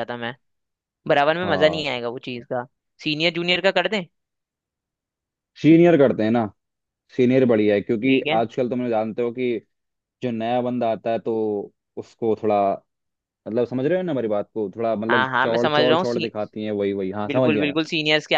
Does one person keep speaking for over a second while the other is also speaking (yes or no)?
yes